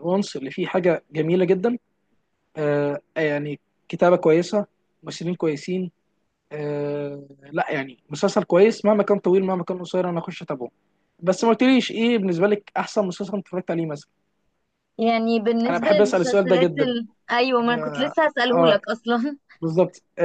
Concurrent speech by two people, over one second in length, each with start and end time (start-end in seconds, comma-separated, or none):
15.7-16.9